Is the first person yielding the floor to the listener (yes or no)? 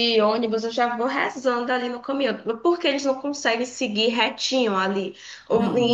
no